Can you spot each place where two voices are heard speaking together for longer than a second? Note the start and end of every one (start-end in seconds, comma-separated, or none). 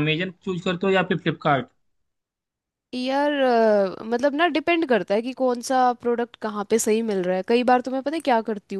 none